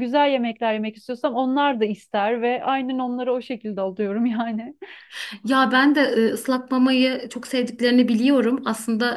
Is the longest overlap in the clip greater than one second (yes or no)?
no